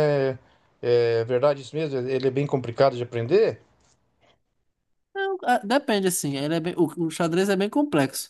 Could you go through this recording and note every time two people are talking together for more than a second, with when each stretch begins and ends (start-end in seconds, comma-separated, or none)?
none